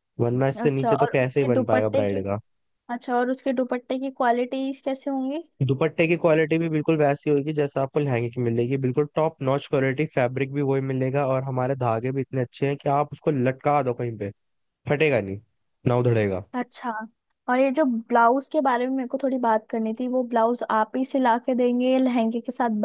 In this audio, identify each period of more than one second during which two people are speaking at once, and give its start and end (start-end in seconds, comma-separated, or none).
0.6-2.2